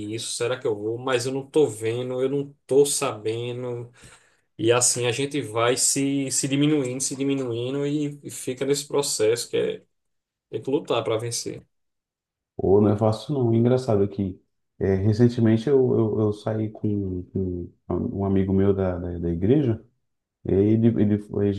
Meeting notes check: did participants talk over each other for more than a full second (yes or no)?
no